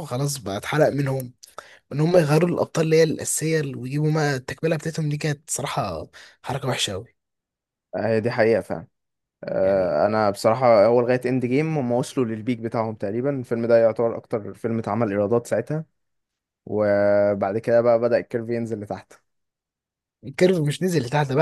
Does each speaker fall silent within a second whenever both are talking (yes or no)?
yes